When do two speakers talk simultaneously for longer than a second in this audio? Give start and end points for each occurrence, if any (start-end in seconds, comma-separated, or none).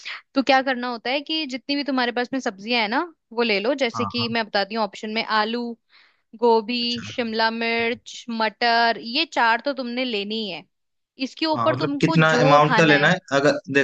11.5-13.1